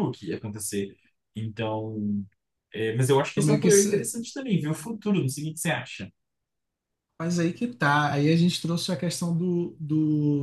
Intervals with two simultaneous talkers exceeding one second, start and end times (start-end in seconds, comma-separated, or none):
none